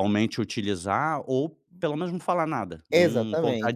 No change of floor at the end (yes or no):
no